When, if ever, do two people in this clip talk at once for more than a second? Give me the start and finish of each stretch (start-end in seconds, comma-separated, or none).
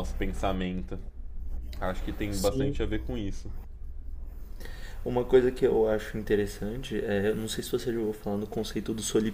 none